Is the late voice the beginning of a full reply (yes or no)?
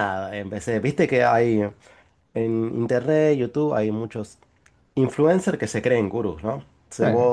no